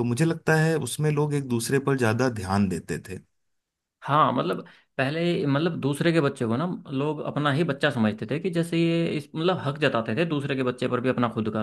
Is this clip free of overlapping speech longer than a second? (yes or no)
yes